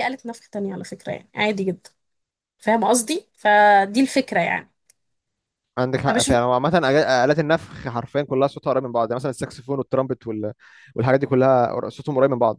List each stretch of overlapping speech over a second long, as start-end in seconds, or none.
none